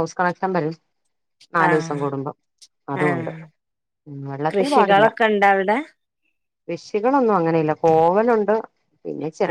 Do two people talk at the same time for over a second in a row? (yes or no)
no